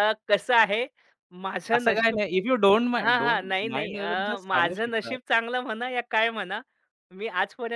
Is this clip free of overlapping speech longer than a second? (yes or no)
no